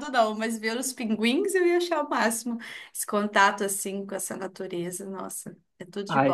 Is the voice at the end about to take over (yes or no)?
yes